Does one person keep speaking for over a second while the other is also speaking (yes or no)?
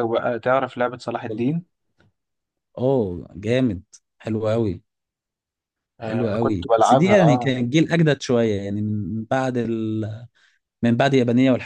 yes